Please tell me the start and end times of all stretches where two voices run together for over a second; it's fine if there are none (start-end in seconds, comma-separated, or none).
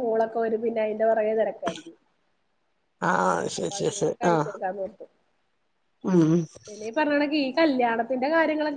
none